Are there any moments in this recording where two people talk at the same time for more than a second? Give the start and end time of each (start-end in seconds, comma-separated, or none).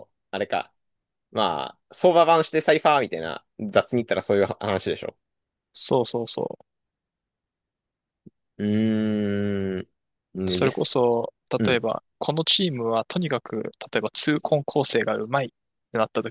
none